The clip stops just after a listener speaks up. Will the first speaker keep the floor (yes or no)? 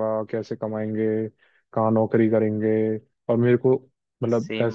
no